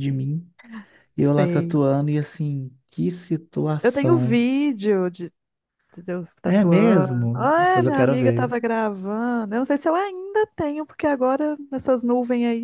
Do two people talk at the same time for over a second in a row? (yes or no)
yes